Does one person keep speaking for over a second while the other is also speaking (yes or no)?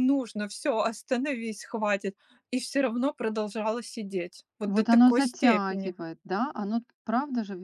yes